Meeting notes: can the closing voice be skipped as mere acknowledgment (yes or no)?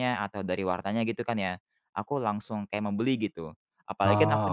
yes